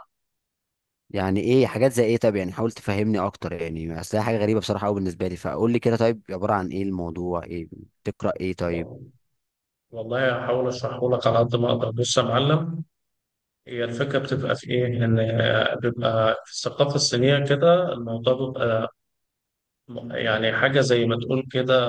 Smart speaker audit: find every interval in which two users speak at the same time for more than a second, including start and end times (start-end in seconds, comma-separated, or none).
none